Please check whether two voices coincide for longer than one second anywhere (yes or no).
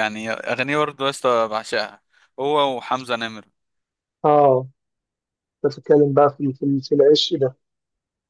no